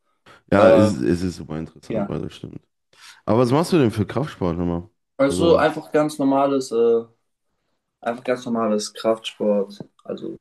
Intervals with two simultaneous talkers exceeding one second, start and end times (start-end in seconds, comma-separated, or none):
none